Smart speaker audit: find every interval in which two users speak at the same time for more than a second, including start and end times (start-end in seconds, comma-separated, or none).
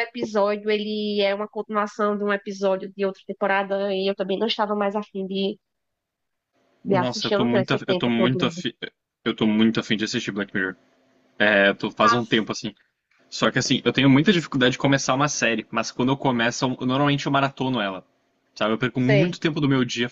6.9-8.6